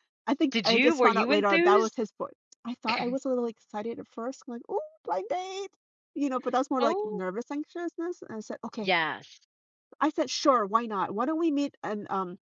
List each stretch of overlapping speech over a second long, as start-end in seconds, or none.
0.5-2.0